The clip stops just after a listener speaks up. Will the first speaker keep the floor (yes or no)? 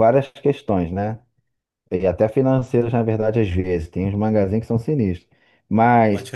yes